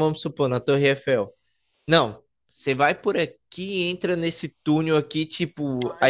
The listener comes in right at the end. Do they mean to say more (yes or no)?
no